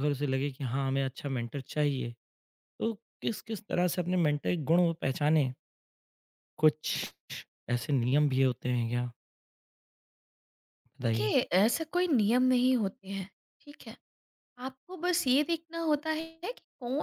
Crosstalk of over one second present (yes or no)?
no